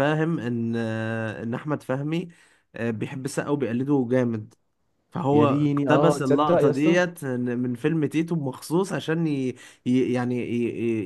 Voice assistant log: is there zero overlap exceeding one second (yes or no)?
no